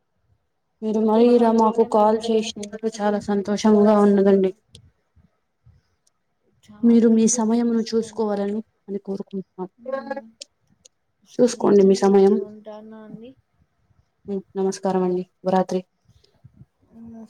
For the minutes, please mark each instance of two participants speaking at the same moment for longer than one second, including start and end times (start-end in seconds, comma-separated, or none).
6.9-8.3